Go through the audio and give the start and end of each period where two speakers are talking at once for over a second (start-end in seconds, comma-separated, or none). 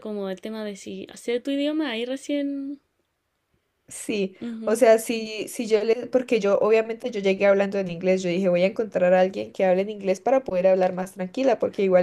none